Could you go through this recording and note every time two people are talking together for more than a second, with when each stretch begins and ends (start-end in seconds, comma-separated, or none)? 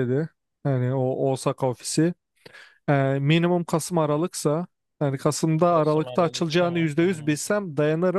5.6-7.4